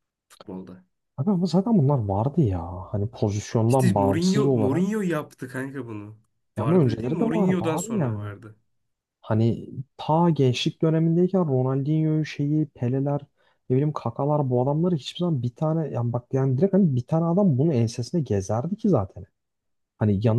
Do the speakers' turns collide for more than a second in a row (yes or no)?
yes